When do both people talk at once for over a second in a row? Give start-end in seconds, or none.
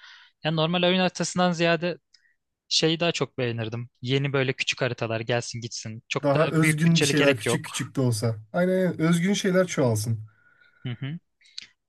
6.2-7.8